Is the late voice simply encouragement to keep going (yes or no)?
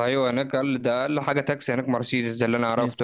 no